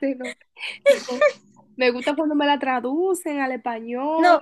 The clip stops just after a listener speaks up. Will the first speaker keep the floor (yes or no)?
no